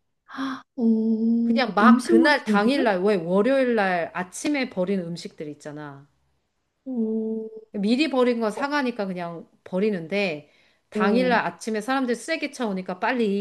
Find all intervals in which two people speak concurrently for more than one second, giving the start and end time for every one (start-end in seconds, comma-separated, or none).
1.4-2.9